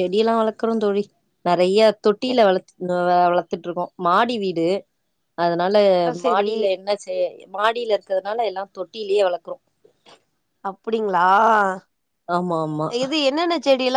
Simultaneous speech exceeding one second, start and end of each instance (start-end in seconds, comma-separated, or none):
none